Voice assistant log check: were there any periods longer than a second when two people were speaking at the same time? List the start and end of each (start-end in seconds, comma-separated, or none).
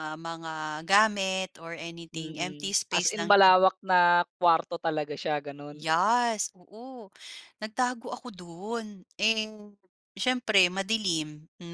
2.1-3.5